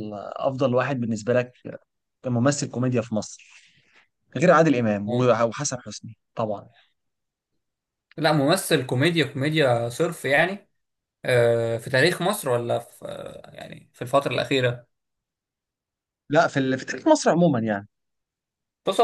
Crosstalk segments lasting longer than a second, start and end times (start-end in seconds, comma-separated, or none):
none